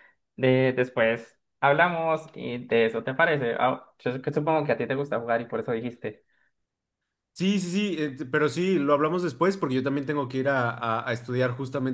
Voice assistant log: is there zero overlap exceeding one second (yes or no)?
yes